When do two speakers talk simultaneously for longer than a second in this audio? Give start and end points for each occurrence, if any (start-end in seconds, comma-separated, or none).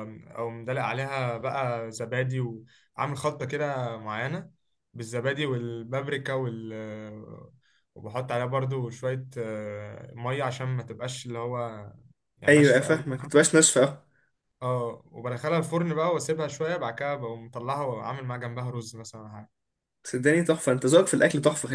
none